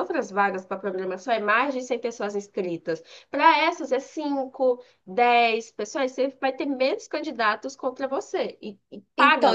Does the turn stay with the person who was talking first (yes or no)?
no